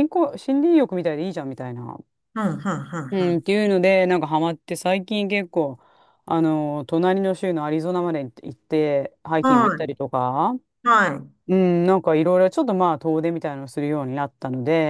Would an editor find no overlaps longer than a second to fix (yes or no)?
yes